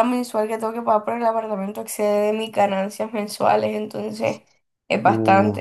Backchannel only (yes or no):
no